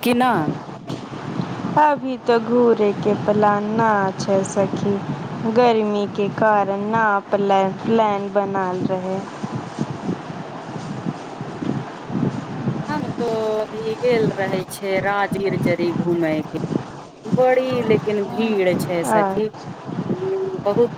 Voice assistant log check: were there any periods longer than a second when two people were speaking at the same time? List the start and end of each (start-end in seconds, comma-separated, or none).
none